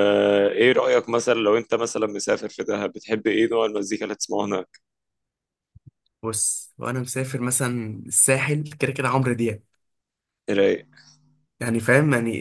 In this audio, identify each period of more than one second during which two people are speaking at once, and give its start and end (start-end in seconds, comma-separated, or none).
none